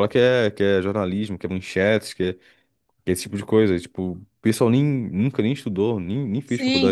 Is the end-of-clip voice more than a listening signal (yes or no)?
yes